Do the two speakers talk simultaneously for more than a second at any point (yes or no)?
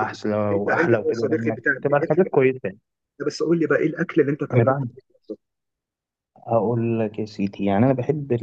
yes